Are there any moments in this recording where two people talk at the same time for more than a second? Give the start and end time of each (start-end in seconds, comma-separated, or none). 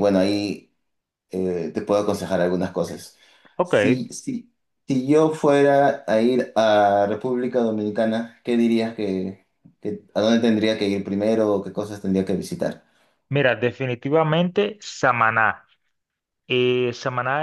none